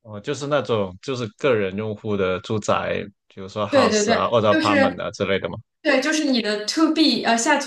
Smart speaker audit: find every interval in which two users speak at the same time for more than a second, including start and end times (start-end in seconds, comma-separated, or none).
3.7-5.0